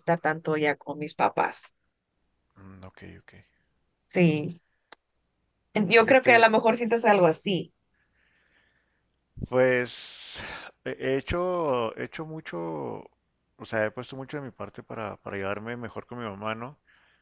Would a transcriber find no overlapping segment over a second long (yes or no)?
yes